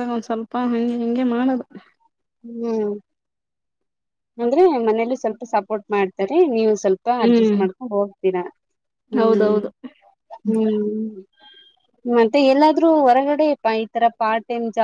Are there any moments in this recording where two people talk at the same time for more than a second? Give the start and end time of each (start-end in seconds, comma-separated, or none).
none